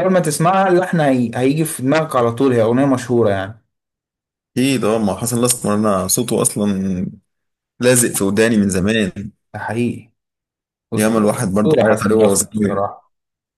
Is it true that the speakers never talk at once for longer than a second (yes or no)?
no